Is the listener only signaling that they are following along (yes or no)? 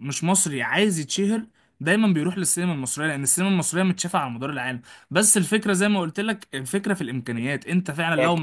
no